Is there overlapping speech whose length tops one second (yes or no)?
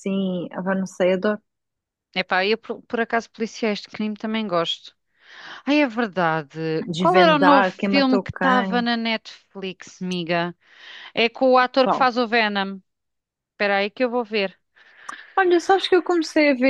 yes